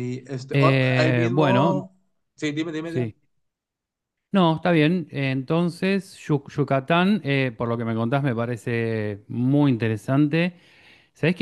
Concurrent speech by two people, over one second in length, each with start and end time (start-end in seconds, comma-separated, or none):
0.5-1.8